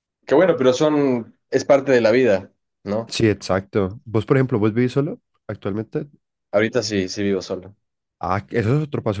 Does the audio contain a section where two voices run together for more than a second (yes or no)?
no